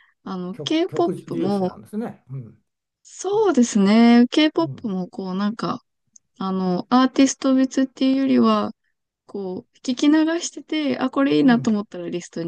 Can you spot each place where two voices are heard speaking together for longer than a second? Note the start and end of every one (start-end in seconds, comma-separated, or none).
0.5-1.8